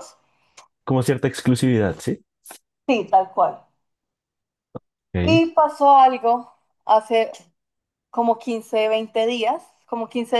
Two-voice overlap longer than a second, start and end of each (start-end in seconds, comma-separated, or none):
none